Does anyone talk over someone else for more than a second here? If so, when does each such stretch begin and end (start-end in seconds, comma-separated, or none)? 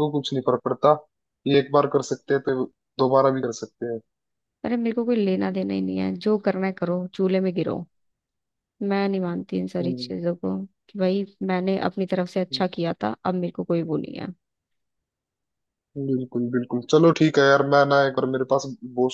none